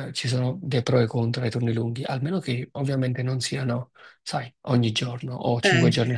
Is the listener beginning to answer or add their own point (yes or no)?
yes